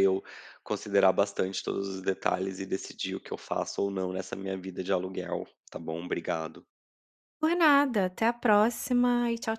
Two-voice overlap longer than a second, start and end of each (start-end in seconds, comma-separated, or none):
none